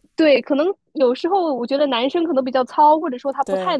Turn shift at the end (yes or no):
no